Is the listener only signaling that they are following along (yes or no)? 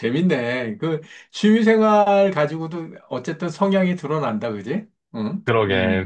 no